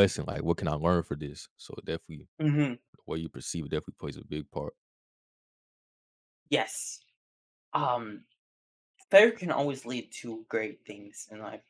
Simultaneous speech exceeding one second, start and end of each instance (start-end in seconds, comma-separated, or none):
none